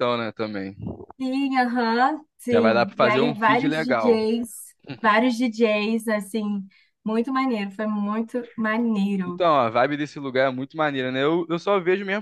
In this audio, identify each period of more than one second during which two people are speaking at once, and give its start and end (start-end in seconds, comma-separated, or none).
2.5-4.2